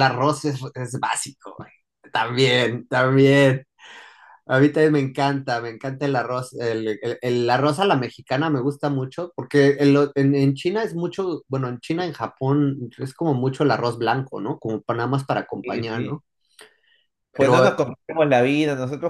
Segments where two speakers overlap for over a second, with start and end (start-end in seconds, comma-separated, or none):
none